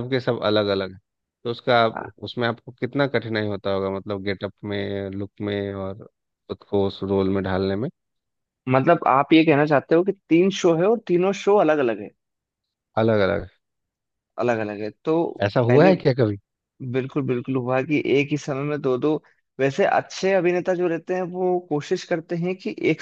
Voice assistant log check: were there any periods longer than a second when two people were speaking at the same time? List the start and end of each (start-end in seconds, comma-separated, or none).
none